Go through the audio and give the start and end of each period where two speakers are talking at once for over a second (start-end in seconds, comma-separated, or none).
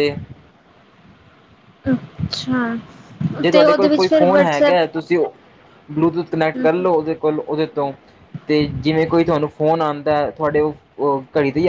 3.5-4.9